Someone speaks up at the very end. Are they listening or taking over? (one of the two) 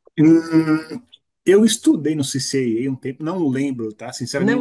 listening